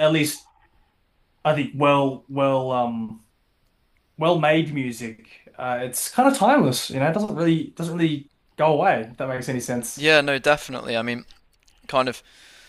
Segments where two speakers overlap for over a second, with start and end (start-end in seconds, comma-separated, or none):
none